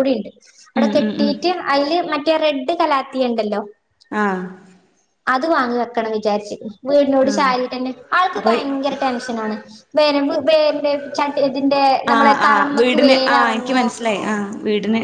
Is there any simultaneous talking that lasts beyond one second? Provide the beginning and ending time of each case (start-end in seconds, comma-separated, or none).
12.1-13.8